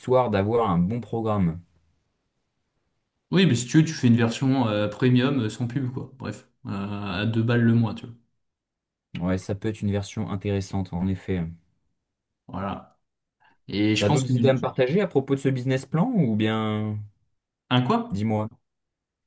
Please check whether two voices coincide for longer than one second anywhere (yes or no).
no